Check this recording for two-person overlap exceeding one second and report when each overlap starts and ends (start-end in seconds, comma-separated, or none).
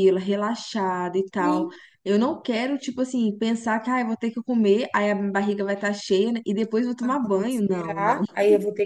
7.0-8.2